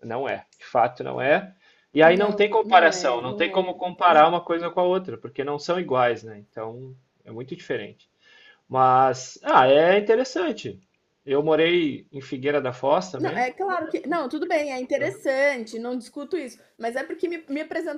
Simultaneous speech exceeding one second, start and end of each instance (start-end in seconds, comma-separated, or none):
2.0-4.3